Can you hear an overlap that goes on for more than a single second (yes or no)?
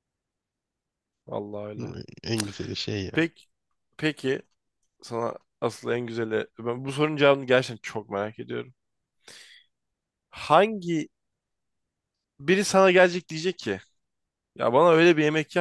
no